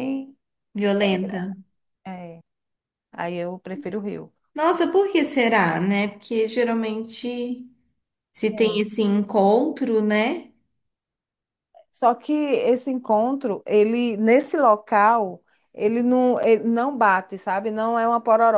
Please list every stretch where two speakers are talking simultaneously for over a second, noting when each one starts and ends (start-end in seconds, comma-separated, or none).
none